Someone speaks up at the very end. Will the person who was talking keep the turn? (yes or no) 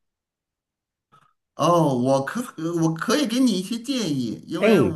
yes